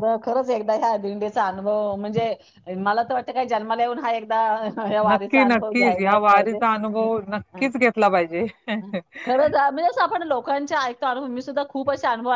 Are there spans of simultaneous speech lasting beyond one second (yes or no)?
yes